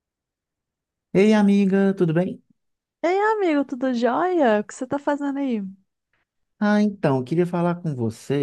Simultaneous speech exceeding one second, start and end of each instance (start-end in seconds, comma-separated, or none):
none